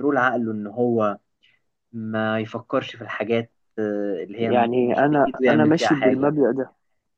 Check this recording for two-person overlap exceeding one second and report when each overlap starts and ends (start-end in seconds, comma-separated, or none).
4.4-6.3